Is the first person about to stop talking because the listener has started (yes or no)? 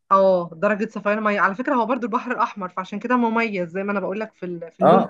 yes